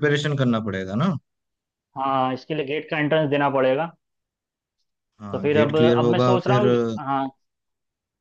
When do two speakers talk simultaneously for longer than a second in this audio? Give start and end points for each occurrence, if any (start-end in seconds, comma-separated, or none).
5.3-6.7